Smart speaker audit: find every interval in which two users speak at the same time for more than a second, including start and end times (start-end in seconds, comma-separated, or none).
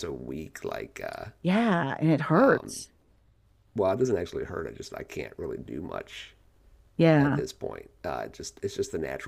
none